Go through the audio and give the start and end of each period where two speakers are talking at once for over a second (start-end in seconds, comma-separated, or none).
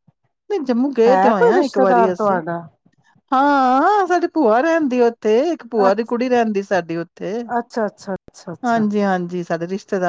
1.1-2.4